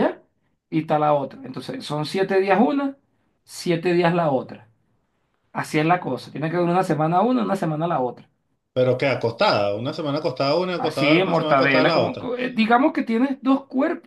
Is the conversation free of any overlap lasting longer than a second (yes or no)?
no